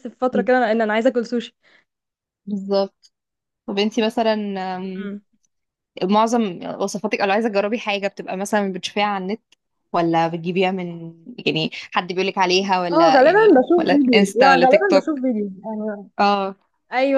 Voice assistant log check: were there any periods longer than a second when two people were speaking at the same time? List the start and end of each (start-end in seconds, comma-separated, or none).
12.9-15.1